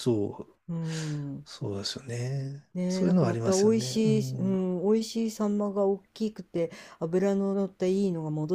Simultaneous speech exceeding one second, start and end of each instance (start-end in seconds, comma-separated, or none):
2.7-4.6